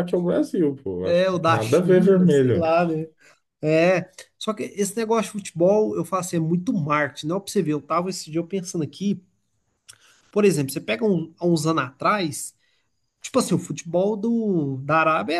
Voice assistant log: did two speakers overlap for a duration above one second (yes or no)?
yes